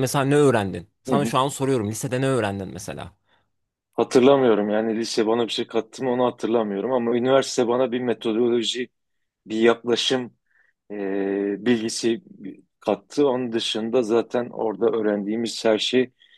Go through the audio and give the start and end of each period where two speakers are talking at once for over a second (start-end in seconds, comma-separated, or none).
none